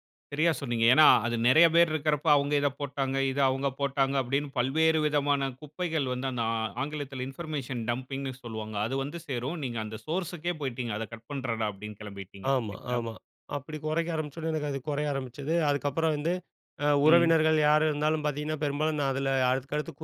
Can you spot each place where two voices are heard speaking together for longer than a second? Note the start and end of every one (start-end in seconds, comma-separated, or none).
none